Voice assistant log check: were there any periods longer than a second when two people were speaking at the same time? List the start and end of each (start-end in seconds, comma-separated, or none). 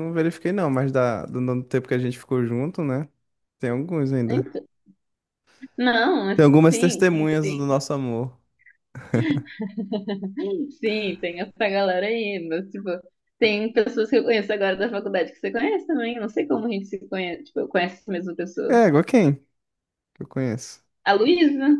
6.3-7.8